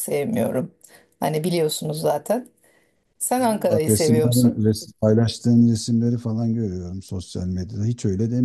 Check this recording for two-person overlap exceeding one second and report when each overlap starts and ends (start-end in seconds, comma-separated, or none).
3.4-4.7